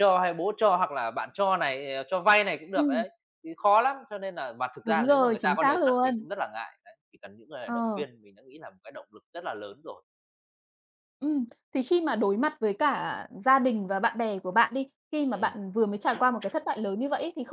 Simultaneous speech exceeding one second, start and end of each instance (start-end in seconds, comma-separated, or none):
4.8-6.2